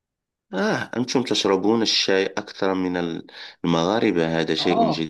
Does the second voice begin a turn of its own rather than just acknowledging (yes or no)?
yes